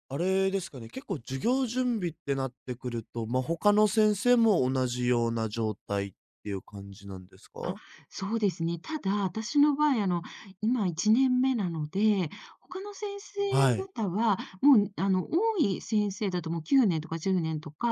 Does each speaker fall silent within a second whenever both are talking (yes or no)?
yes